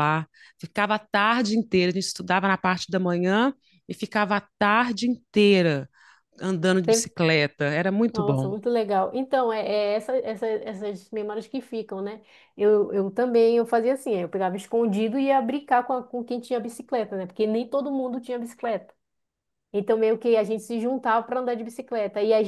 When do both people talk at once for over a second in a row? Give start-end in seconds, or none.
none